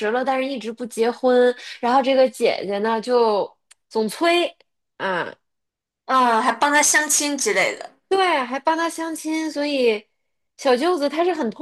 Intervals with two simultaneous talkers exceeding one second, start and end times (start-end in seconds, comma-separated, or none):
none